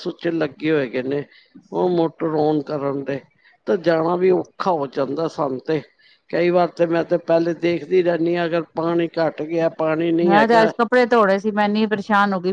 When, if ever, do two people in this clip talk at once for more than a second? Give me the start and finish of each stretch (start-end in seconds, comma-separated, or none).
none